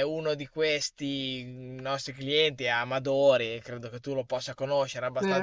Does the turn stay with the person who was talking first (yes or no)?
yes